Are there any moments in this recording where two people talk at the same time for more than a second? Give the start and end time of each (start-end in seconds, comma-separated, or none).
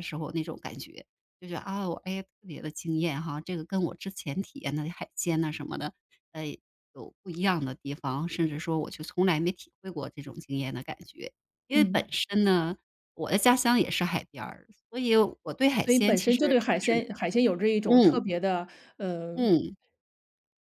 15.8-17.1